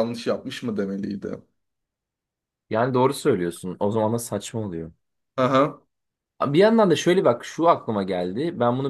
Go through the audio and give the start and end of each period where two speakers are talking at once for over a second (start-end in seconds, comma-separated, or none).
none